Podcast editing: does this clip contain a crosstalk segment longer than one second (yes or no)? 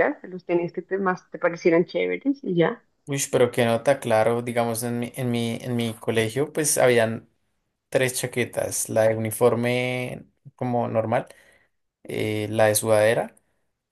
no